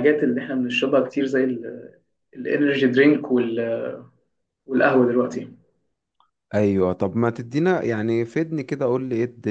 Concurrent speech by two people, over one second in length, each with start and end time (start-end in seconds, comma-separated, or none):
none